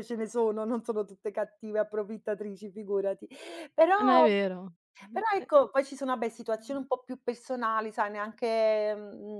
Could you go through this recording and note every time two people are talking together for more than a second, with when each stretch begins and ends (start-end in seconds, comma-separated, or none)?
none